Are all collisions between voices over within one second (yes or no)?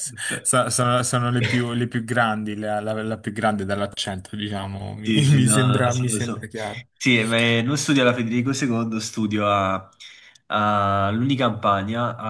no